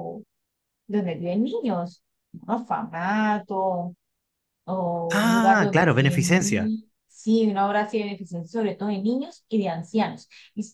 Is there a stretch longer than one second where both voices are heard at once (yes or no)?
yes